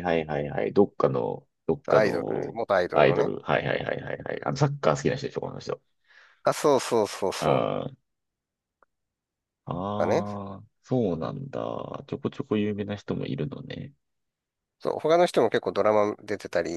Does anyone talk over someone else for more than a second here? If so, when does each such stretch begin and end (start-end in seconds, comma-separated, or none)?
1.9-3.3